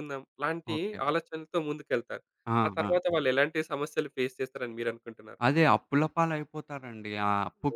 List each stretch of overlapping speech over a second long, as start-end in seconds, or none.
none